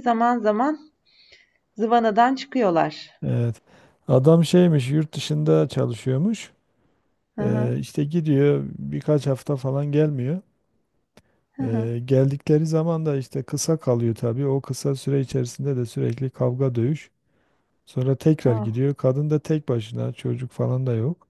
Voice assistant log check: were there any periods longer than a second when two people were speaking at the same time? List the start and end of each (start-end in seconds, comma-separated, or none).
none